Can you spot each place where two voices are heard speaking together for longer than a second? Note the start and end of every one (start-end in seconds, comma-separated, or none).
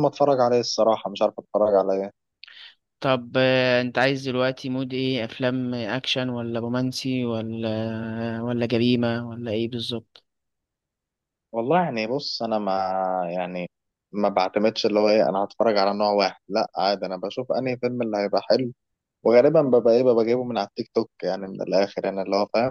none